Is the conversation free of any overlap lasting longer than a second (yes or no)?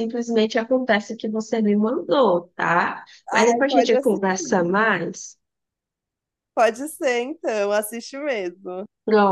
no